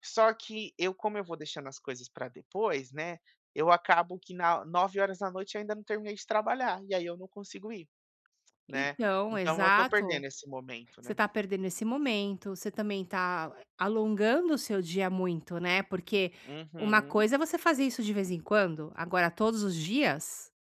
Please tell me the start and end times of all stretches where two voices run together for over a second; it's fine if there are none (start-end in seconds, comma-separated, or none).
8.7-10.2